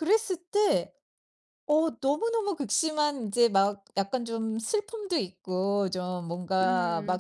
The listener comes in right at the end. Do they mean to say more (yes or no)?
no